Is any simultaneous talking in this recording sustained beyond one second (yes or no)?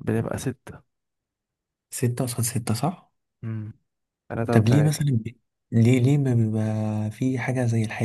no